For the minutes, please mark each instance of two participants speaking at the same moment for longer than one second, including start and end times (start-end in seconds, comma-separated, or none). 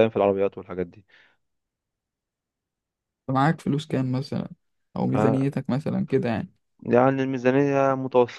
none